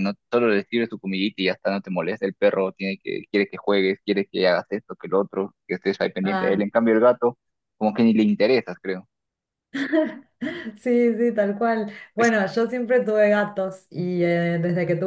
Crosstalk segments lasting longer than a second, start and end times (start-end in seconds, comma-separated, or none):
none